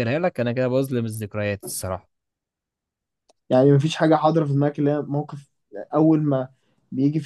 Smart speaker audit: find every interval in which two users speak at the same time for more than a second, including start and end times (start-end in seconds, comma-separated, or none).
none